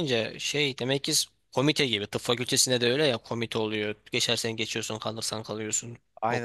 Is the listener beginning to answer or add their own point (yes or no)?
yes